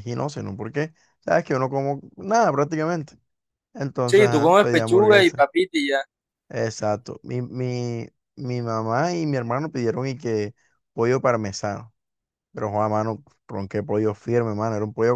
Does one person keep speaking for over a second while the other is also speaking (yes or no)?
yes